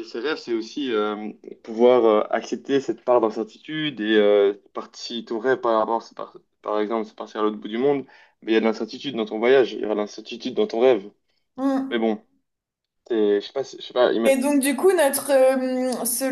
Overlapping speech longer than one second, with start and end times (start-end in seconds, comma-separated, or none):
none